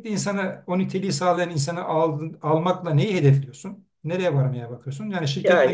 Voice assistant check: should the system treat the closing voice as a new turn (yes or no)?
yes